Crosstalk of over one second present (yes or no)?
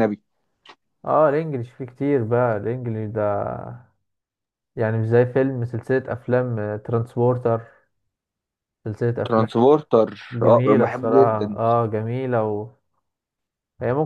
yes